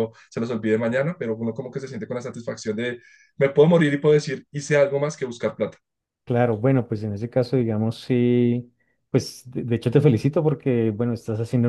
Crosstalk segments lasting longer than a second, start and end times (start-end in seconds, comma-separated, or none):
none